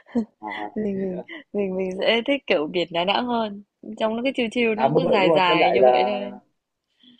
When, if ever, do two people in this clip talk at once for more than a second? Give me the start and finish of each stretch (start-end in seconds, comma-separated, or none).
4.8-6.2